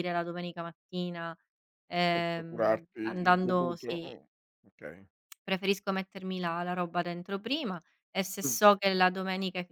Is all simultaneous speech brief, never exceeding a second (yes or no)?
no